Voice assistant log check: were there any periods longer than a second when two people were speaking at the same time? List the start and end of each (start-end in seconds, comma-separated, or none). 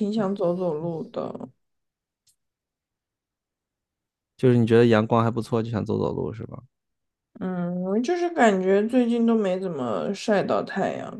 none